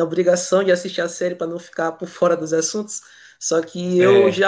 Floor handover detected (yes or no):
no